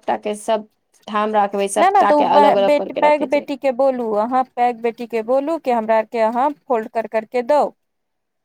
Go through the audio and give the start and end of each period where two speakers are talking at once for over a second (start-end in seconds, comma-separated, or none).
1.8-3.4